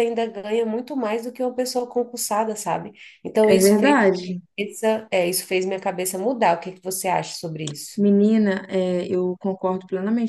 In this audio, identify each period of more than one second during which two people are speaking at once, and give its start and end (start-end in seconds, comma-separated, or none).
none